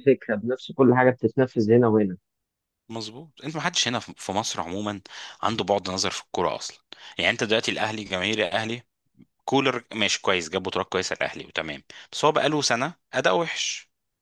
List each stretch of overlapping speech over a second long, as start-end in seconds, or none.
none